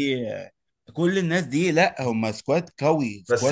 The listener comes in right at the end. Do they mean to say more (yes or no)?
yes